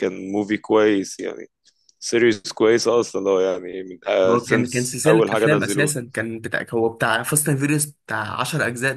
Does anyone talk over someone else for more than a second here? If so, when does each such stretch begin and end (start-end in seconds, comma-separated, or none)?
4.3-6.0